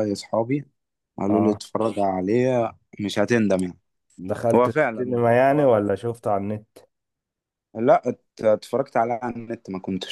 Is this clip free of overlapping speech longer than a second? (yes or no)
no